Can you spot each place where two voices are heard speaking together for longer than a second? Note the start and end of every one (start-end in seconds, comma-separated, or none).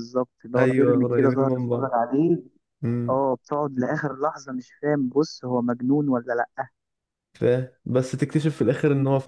0.6-2.0